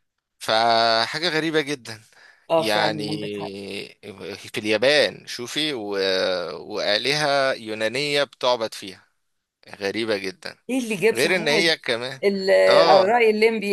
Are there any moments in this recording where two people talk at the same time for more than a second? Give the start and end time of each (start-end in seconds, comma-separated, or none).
none